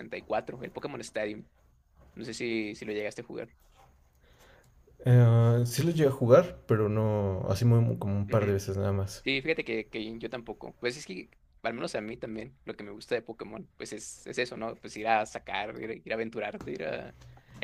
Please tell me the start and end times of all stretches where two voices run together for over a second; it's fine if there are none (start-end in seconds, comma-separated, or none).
none